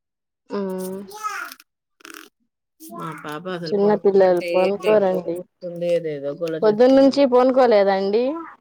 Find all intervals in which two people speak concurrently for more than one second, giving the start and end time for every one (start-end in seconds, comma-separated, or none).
3.7-5.4